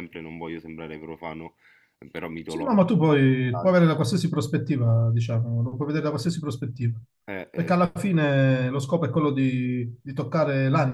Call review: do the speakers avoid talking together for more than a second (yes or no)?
no